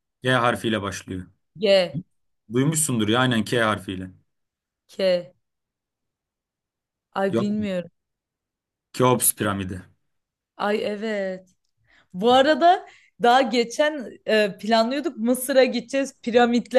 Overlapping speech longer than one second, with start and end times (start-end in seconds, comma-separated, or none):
none